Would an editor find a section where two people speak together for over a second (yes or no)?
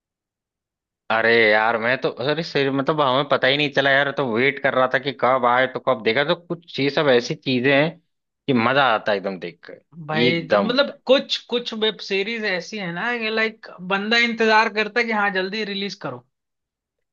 no